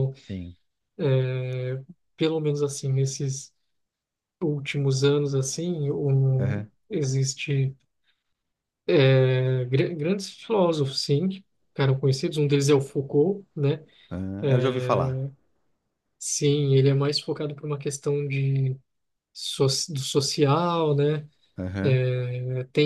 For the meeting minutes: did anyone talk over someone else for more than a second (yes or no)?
no